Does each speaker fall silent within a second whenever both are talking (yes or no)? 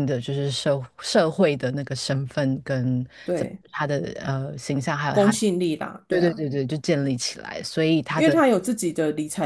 yes